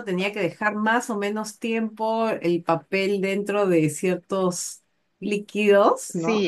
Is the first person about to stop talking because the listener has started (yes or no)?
yes